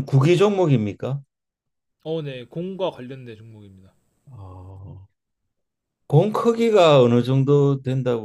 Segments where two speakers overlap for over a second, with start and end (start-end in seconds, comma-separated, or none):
none